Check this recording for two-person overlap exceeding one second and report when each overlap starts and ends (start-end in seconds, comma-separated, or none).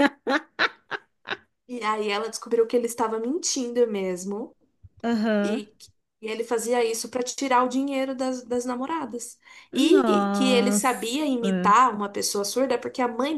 9.7-11.1